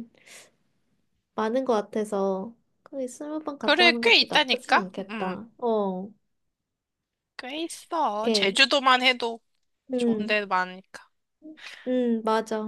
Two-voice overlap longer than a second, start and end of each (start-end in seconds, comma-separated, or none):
3.6-5.4